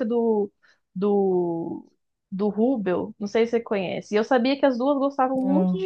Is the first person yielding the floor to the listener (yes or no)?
no